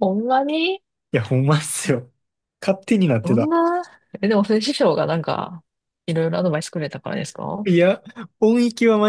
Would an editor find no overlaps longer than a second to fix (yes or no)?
yes